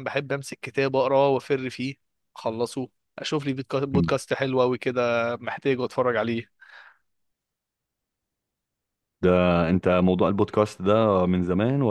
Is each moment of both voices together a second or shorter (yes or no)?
yes